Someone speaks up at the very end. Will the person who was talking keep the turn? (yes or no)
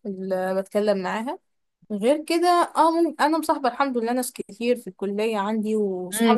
no